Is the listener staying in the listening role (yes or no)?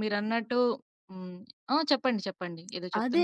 no